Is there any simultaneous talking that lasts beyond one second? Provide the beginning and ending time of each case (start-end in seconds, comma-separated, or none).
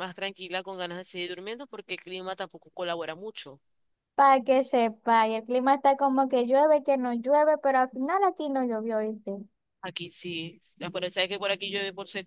none